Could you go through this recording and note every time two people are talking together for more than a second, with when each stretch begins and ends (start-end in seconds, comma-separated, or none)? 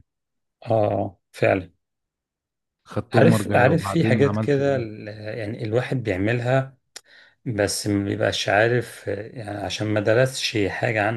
3.1-4.9